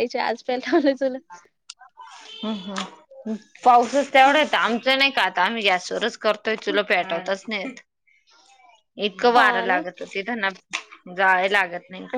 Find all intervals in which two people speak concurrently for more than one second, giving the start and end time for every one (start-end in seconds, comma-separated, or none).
none